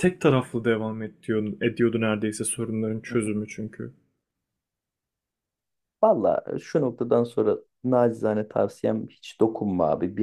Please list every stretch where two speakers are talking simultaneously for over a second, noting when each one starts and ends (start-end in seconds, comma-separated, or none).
none